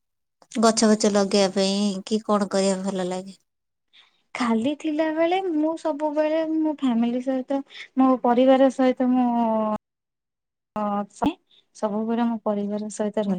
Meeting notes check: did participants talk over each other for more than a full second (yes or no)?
no